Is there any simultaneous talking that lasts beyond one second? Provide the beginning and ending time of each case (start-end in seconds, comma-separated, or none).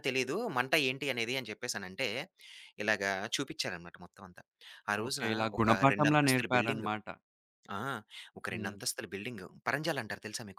5.0-6.9